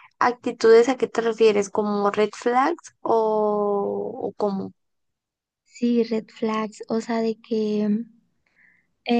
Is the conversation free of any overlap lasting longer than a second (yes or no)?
yes